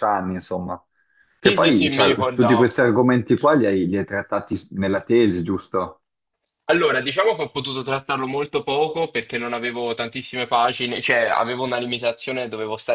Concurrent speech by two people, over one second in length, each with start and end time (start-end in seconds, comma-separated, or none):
1.4-2.9